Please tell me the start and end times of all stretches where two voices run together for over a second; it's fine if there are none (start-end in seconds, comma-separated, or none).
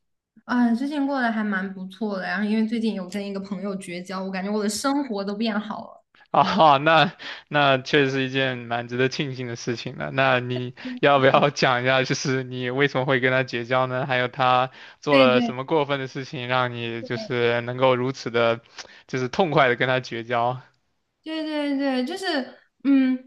none